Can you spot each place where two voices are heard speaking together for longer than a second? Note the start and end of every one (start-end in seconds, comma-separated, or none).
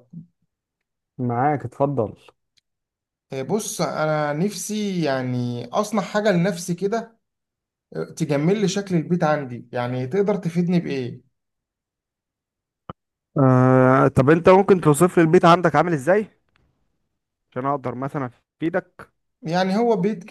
none